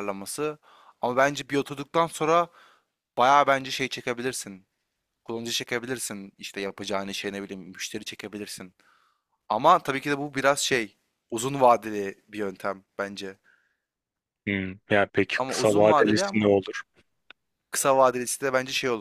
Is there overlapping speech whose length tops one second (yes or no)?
yes